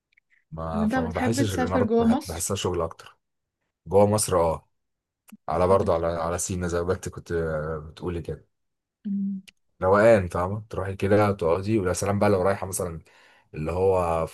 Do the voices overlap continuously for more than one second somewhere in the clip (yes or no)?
yes